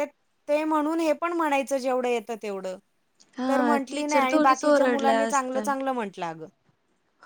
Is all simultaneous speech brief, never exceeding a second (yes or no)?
no